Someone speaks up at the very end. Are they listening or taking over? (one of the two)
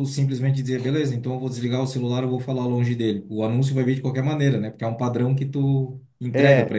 taking over